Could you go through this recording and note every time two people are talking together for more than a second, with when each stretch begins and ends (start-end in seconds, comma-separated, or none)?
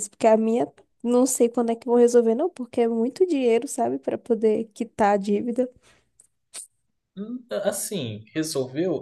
none